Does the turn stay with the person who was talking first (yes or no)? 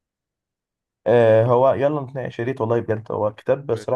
yes